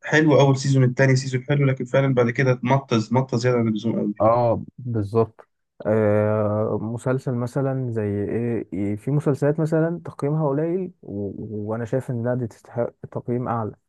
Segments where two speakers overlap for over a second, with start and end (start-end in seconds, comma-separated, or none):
none